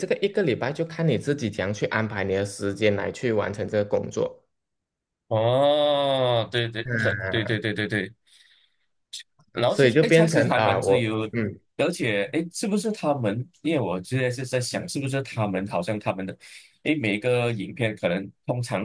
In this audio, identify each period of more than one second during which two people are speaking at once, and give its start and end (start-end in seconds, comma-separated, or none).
9.7-11.3